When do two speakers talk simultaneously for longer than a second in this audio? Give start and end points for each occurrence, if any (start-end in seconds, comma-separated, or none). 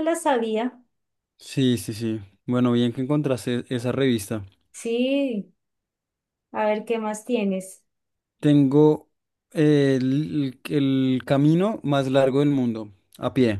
none